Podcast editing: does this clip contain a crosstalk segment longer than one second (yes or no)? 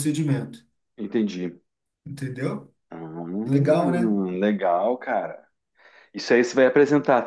no